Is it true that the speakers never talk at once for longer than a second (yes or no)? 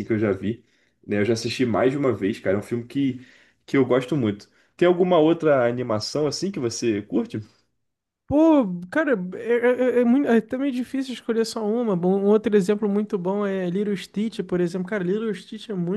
yes